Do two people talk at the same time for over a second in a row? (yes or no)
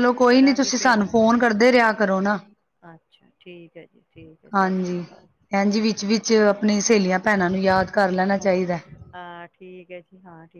no